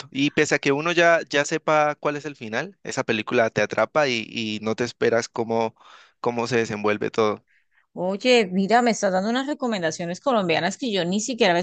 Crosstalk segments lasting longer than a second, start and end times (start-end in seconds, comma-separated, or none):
none